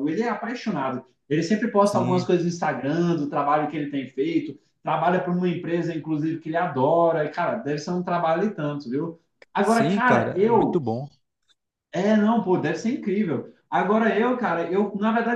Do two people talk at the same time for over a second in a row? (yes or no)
yes